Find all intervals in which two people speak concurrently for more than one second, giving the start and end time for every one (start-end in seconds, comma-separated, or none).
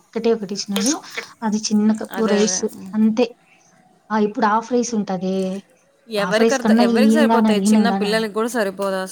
6.3-8.2